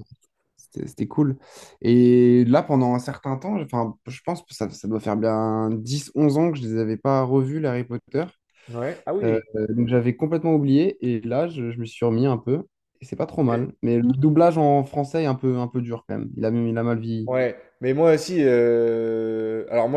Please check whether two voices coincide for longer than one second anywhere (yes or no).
no